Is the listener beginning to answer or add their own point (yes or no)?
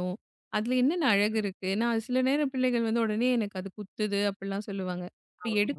no